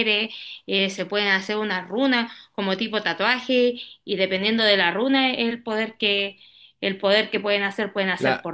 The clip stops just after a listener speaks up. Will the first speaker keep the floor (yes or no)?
no